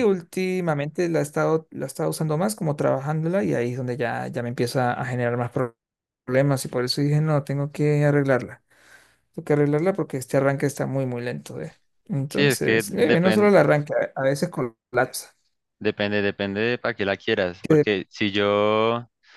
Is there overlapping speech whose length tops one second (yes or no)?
yes